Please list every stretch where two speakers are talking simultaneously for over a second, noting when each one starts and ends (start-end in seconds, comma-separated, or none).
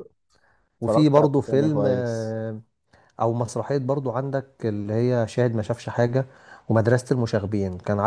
0.8-2.4